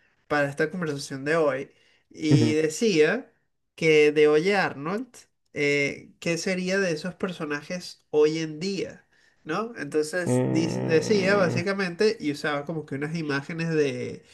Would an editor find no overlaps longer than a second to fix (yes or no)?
no